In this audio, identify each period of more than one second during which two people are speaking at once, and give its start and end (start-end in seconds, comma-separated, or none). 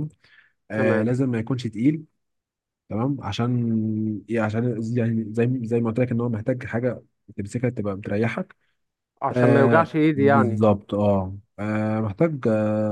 9.3-10.6